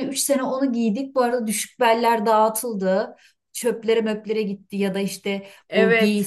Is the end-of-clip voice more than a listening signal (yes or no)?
no